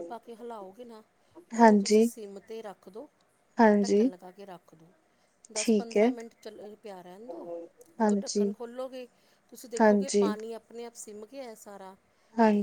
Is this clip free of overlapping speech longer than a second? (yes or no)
yes